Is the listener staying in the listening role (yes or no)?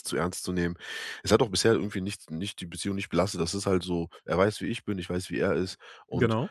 yes